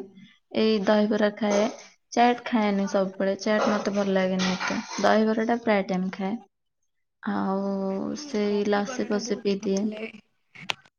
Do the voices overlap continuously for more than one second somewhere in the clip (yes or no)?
no